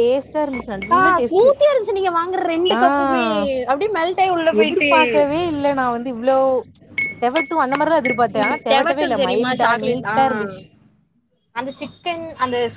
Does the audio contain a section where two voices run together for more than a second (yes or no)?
yes